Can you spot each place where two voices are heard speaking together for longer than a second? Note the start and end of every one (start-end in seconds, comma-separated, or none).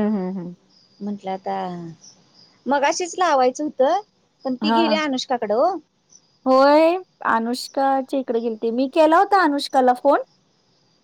none